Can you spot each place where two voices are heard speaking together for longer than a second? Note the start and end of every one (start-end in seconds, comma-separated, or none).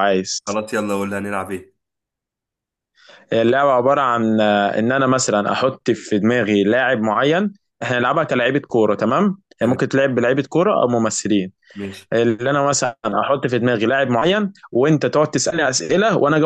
none